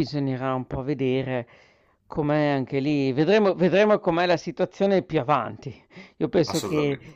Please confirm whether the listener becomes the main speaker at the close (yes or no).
no